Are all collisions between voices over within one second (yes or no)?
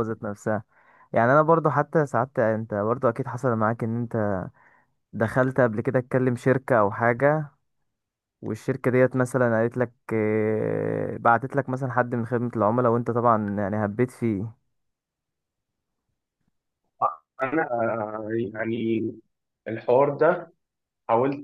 yes